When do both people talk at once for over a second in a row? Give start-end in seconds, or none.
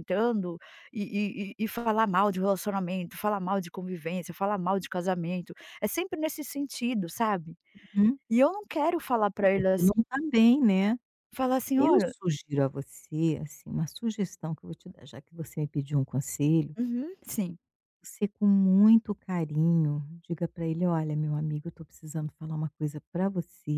none